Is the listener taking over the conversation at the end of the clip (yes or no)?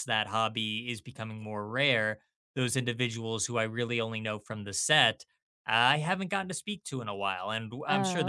no